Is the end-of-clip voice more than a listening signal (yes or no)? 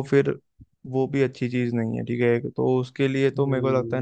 yes